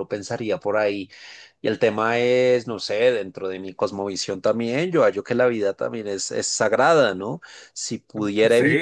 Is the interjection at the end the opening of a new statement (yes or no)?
no